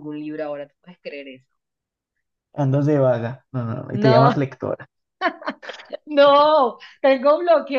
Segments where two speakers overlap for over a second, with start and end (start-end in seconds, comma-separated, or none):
none